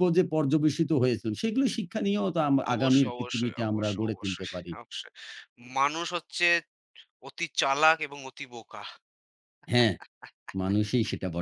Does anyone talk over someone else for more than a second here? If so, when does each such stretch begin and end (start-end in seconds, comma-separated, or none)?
2.7-4.7